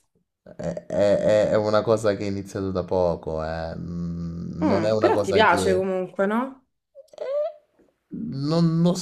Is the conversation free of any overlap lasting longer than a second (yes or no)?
no